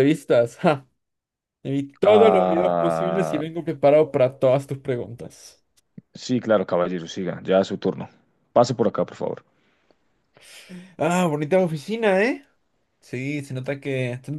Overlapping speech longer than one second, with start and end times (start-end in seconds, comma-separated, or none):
2.0-3.4